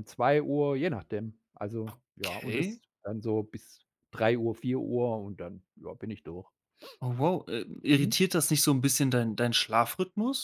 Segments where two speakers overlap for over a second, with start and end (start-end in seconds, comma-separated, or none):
none